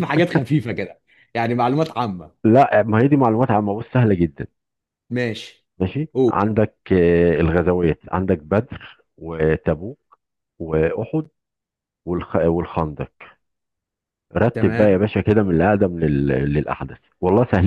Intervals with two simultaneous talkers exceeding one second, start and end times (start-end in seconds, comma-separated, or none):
none